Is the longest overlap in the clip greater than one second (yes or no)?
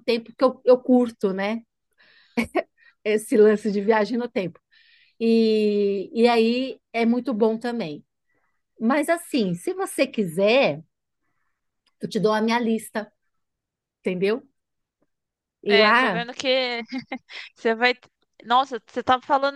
no